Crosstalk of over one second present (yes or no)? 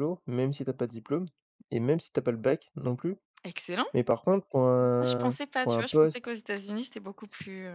yes